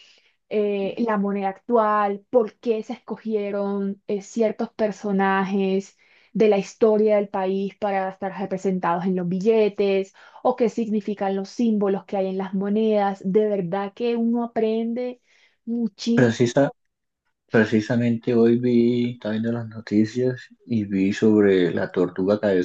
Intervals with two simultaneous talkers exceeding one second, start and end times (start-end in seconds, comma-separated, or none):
none